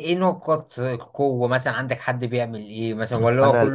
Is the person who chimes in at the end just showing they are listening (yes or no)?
no